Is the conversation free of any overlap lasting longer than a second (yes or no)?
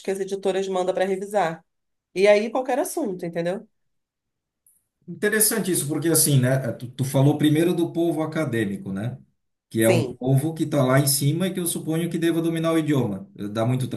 yes